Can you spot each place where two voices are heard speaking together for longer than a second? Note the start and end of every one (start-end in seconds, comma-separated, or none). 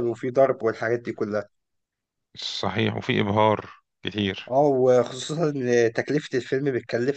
none